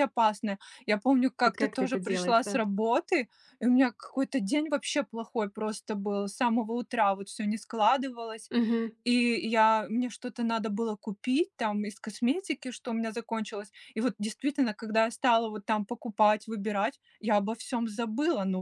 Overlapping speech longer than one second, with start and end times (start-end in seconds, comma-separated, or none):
1.4-2.6